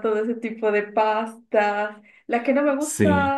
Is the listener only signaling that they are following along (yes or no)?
yes